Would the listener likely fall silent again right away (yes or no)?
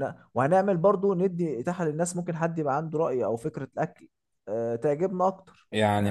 no